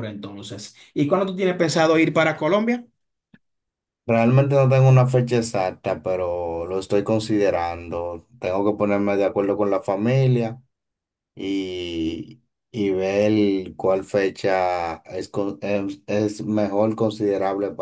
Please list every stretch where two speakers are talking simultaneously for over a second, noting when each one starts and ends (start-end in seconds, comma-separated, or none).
none